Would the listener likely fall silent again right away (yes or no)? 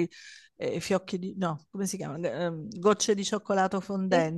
yes